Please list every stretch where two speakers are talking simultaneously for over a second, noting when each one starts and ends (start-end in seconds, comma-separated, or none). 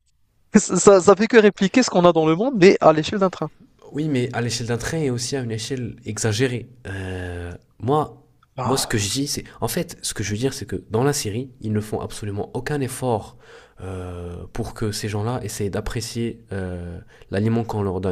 none